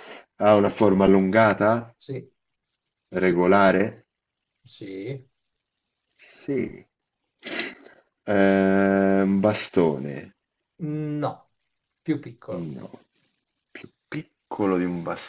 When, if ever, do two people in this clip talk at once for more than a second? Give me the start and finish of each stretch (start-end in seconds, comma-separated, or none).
none